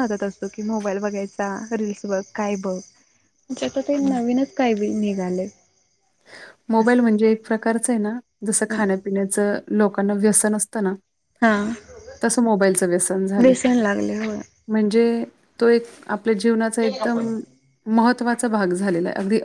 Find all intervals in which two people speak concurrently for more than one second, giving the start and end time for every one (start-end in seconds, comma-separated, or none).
none